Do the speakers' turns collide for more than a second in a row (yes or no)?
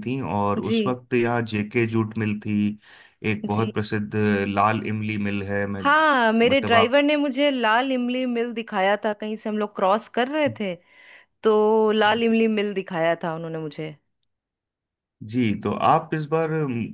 no